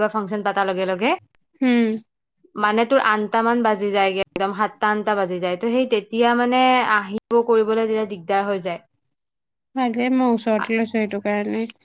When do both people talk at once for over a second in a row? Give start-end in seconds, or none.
none